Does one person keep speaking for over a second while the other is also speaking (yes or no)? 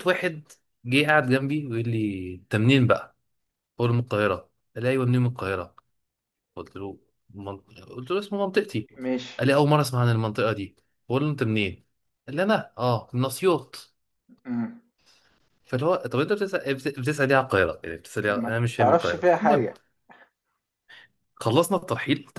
yes